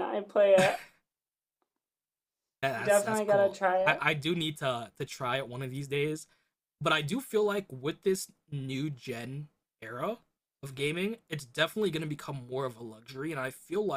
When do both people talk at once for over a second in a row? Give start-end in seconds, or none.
2.7-4.0